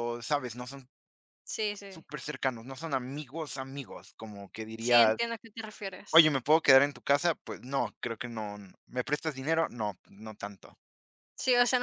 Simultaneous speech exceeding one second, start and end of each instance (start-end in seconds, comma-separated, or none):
none